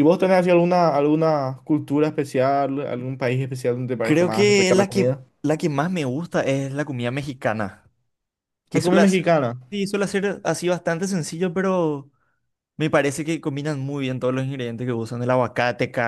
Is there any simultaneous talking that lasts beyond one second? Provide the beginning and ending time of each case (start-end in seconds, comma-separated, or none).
4.0-5.2